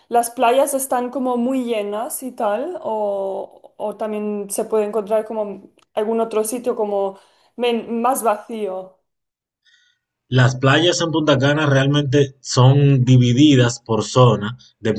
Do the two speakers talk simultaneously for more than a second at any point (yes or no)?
no